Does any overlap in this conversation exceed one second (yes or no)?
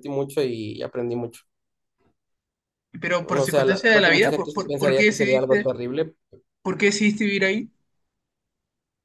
yes